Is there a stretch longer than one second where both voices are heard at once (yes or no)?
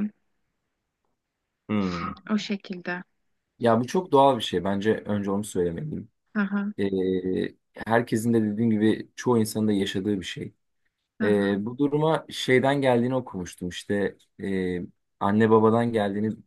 no